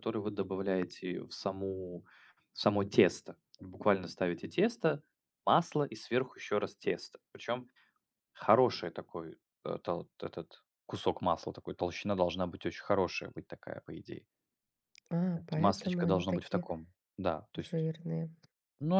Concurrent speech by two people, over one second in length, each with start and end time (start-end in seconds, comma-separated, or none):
15.3-16.7